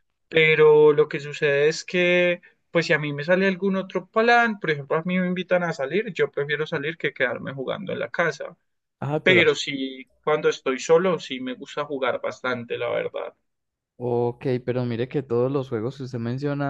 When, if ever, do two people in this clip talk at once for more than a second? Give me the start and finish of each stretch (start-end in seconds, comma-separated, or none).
none